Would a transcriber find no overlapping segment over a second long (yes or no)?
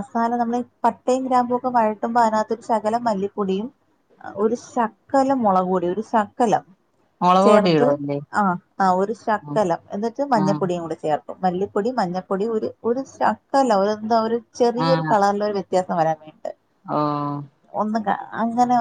yes